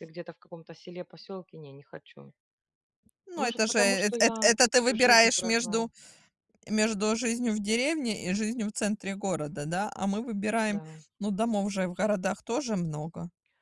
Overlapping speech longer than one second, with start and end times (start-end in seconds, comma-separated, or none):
3.4-5.9